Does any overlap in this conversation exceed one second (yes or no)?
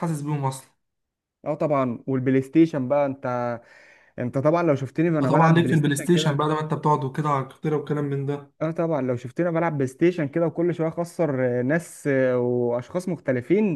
yes